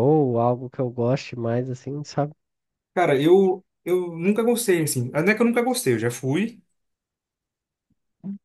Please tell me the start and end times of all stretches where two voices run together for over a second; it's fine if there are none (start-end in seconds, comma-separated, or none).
none